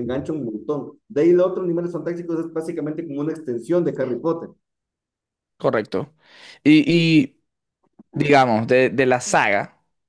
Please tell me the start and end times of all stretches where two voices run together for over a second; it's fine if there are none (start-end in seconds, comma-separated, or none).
none